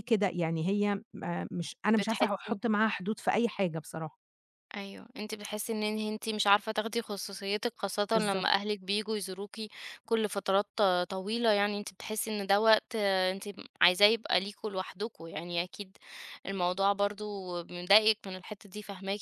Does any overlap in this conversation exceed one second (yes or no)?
no